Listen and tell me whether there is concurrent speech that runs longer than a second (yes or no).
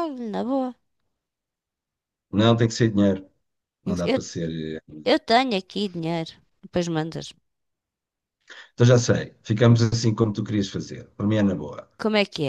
no